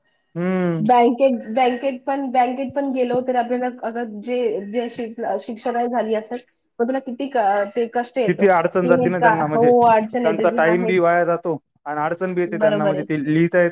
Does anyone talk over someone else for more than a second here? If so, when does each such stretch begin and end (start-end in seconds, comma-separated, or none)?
8.3-10.9